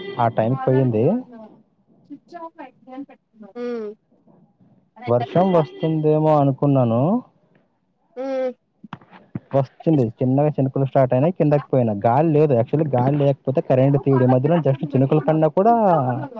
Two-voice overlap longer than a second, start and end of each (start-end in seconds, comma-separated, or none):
13.9-15.7